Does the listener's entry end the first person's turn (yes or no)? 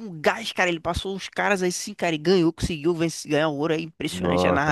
yes